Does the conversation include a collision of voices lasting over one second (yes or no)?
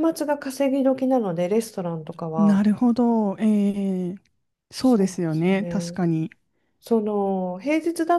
yes